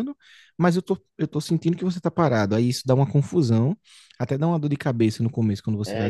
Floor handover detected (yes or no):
yes